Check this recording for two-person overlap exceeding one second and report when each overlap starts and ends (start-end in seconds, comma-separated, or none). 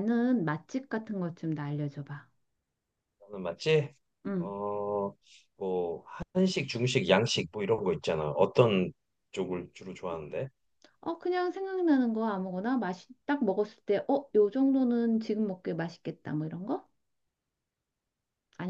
none